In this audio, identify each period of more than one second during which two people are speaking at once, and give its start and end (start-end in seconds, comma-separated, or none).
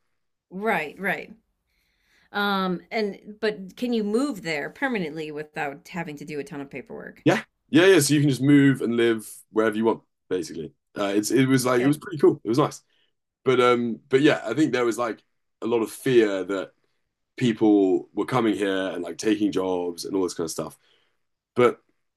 none